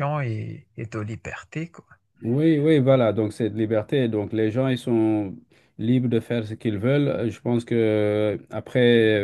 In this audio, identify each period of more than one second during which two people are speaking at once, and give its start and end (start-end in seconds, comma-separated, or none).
none